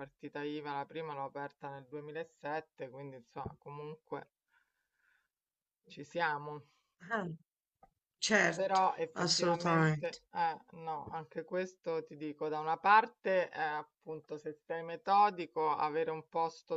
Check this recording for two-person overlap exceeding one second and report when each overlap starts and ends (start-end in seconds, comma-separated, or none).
8.5-10.2